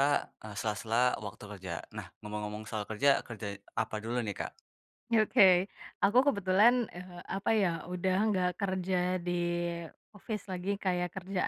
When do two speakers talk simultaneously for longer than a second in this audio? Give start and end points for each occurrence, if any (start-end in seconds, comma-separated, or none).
none